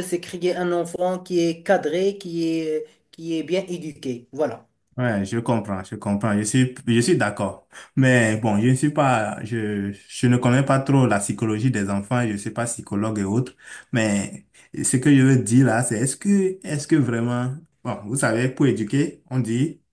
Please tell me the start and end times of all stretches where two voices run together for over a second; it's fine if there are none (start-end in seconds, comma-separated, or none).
none